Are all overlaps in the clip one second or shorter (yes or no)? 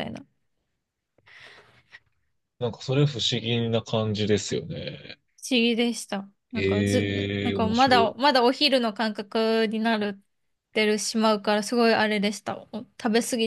no